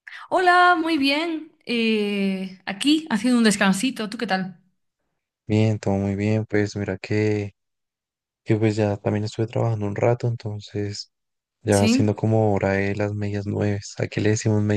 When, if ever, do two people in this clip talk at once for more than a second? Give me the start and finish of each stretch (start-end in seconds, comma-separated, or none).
none